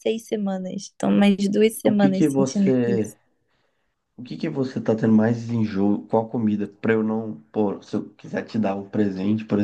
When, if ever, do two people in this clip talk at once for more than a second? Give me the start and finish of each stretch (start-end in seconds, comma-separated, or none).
1.8-3.1